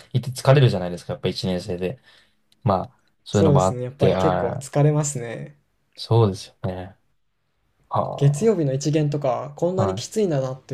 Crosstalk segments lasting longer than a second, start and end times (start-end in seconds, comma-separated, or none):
3.3-4.7